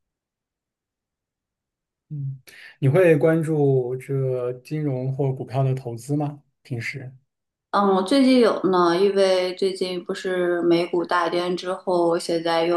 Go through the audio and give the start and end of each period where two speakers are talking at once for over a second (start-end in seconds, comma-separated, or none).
none